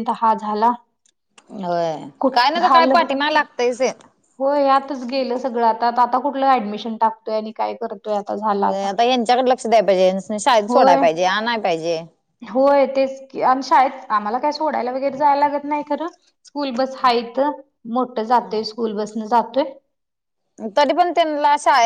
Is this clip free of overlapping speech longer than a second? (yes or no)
yes